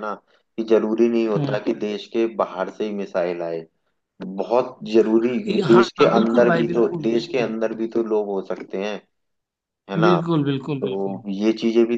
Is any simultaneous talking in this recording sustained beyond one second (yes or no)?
yes